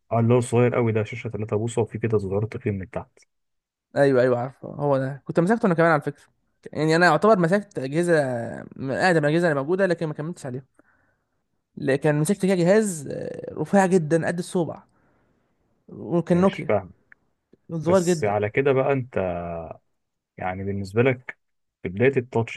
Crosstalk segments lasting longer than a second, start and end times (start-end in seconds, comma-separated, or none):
none